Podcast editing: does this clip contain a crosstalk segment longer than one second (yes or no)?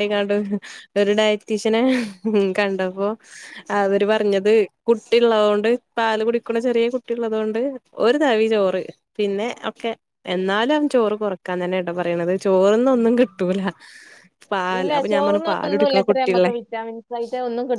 yes